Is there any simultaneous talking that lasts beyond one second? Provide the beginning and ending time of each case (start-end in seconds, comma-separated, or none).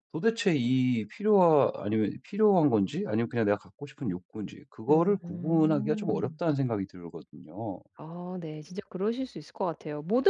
4.9-6.4